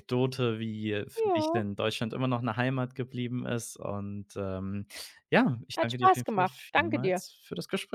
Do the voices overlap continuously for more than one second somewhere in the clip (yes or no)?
yes